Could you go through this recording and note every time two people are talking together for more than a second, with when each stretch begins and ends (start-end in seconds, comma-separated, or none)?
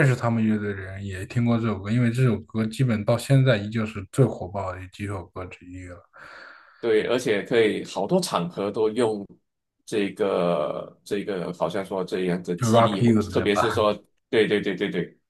12.6-13.8